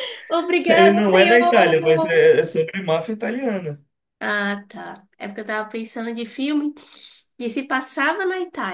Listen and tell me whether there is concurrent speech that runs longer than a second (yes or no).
yes